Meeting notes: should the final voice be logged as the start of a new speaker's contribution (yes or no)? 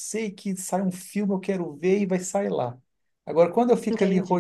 no